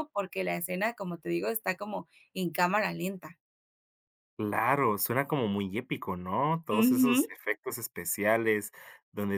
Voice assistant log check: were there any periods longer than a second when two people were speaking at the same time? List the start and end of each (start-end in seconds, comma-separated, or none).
none